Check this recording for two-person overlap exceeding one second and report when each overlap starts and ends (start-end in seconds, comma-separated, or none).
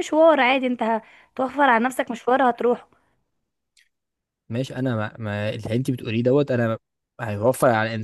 none